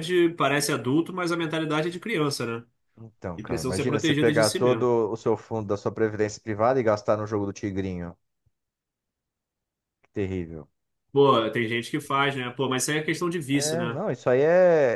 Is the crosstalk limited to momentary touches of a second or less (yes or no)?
no